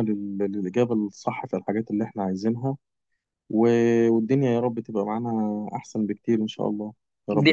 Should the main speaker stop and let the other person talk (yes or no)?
yes